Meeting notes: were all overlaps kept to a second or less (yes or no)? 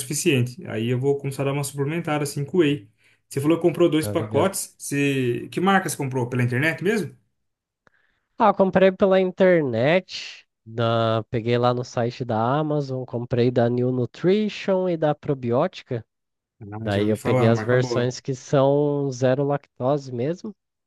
no